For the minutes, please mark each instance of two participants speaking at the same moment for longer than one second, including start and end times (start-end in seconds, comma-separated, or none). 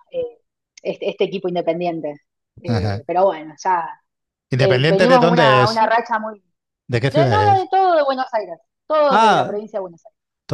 4.6-5.8